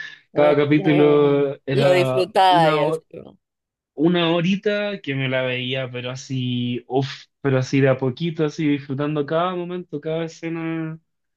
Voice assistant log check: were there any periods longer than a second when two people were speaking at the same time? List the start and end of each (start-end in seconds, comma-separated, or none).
0.7-3.0